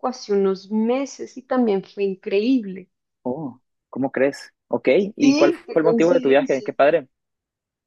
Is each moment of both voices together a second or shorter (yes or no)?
no